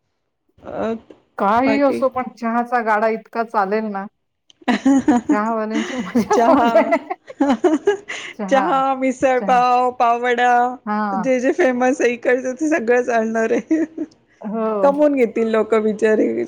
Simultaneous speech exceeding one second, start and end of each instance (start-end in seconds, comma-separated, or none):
none